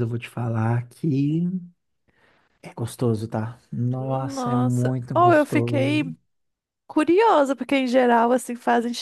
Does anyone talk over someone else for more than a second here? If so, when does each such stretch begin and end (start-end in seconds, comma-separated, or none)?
4.0-6.0